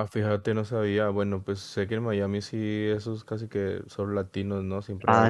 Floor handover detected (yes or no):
no